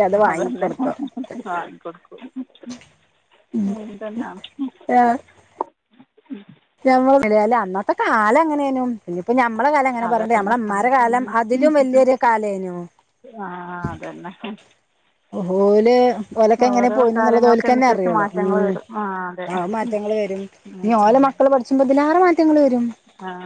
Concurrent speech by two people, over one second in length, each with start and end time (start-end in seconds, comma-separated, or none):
16.7-18.7